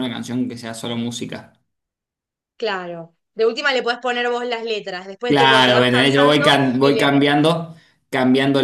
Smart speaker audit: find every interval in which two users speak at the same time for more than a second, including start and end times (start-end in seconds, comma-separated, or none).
5.3-7.1